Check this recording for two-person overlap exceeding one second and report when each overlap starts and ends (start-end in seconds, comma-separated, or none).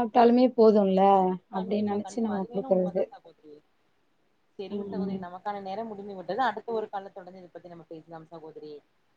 1.5-3.0